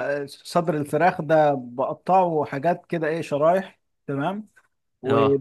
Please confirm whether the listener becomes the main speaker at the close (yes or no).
no